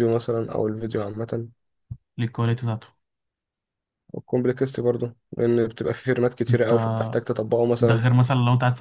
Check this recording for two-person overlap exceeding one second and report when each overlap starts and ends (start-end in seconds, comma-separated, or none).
none